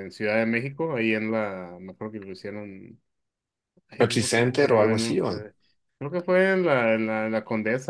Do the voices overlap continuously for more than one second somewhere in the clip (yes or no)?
yes